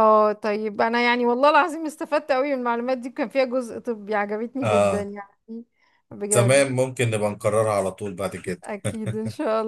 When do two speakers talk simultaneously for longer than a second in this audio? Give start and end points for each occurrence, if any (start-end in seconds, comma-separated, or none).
none